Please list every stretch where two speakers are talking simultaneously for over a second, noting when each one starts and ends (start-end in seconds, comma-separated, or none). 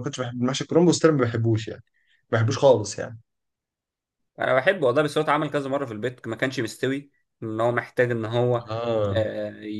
none